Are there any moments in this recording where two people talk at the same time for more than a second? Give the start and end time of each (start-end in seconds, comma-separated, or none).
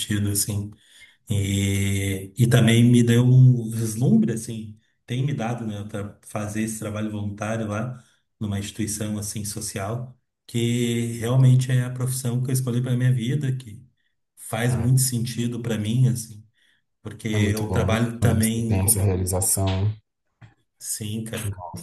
17.3-19.1